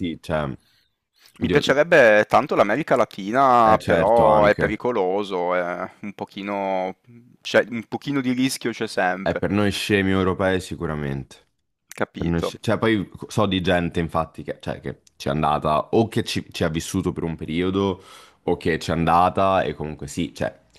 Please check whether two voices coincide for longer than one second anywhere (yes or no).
yes